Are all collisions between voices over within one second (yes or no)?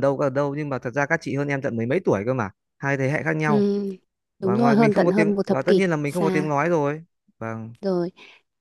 no